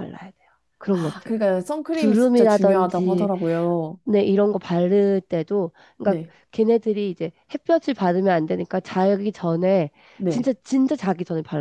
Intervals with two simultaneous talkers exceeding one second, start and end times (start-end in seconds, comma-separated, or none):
2.0-3.3